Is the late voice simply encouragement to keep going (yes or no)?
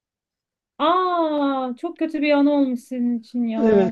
no